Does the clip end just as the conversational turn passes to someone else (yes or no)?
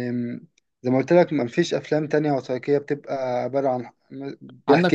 yes